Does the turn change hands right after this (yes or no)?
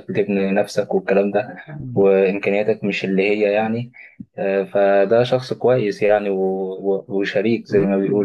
yes